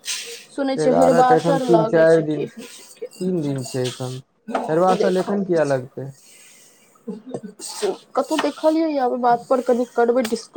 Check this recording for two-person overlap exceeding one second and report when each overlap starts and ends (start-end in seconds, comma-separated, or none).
0.8-3.3